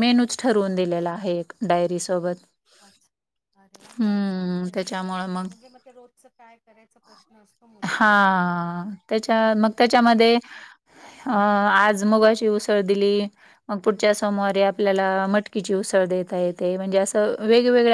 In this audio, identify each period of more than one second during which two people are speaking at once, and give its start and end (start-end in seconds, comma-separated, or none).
none